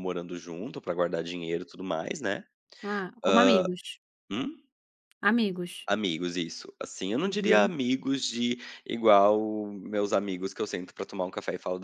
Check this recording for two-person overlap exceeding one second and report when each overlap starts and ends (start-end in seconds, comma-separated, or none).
none